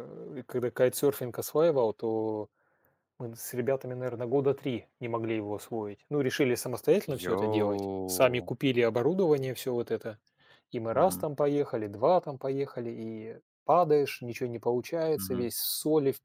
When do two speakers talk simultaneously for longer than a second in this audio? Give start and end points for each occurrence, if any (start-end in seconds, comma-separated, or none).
7.2-8.5